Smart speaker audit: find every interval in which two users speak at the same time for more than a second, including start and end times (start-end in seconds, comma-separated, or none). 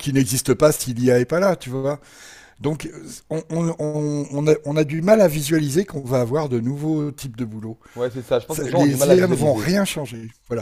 8.5-9.7